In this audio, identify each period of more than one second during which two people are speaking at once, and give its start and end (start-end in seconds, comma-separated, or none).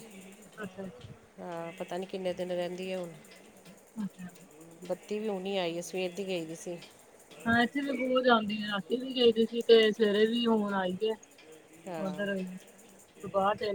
none